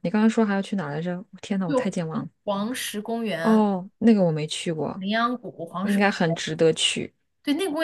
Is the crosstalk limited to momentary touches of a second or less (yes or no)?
yes